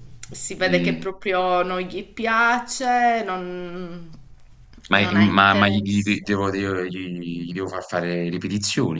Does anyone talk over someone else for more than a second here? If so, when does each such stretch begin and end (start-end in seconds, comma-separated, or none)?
4.9-6.2